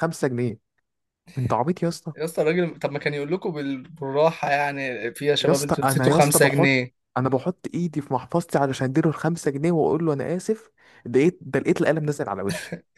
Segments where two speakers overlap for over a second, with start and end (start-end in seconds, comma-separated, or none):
5.4-6.8